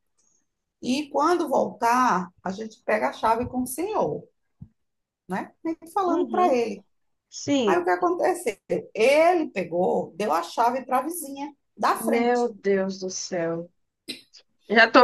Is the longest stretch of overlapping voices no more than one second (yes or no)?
yes